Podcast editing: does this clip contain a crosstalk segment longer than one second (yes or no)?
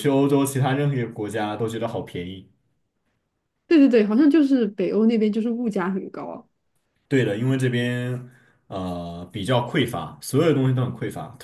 no